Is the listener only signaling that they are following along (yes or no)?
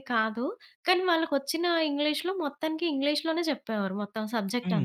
no